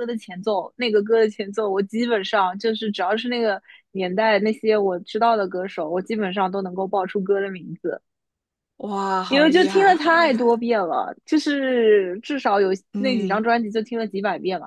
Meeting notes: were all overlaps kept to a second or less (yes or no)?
no